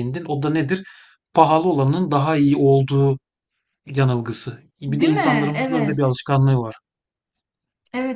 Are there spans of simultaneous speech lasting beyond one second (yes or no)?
yes